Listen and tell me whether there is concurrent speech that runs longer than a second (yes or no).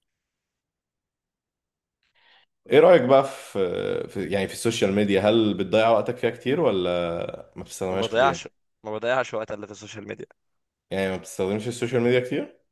no